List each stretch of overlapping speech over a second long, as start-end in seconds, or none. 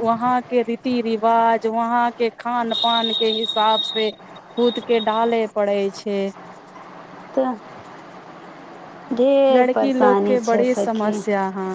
9.5-11.1